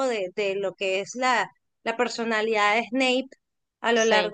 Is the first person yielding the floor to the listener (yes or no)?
no